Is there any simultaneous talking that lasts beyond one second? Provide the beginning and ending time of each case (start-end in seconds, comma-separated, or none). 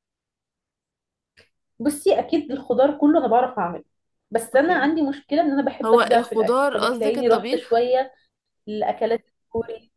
5.8-7.8